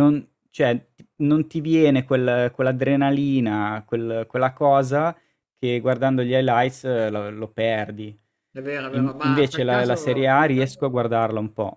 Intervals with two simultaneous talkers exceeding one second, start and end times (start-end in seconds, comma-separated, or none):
8.9-10.3